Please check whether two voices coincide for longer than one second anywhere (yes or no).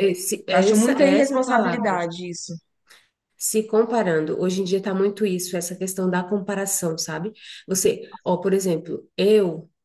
yes